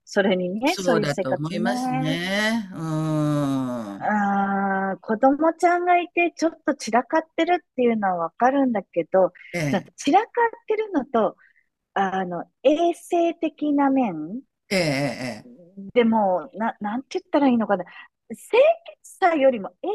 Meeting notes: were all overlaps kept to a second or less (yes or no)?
no